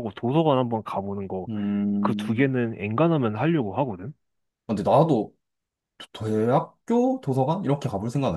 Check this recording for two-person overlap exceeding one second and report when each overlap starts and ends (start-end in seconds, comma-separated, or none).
none